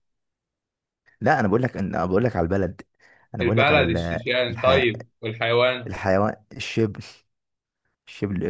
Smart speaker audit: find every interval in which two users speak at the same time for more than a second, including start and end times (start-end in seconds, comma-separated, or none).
3.4-4.8